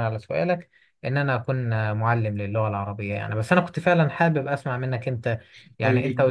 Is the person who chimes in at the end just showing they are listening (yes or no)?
yes